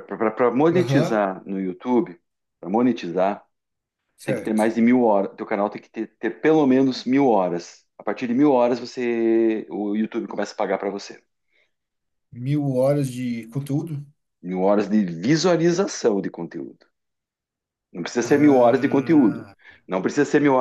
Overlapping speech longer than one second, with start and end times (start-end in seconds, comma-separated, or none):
18.2-19.5